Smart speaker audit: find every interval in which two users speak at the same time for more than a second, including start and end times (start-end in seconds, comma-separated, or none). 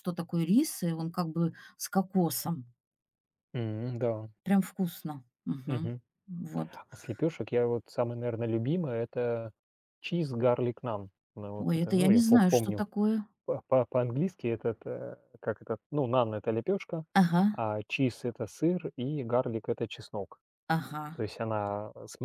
11.6-12.8